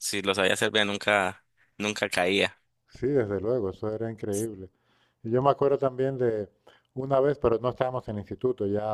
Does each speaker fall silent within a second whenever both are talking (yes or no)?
yes